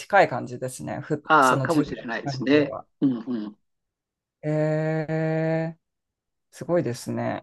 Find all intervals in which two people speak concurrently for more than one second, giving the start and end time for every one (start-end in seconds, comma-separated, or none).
1.2-2.9